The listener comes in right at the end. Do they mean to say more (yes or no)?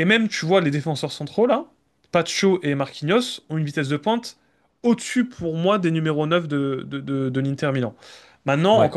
no